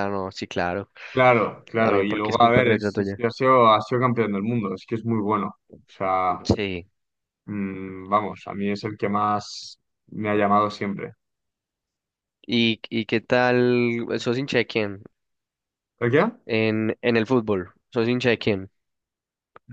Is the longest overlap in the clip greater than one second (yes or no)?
yes